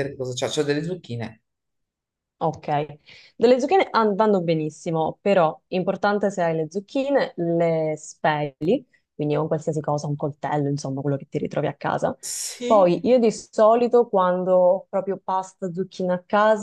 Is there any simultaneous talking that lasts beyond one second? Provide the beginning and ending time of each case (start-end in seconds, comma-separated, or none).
none